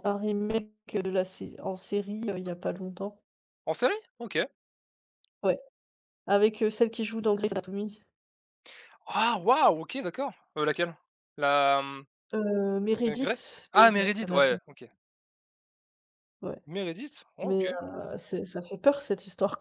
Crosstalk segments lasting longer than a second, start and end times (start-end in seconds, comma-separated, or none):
13.0-14.6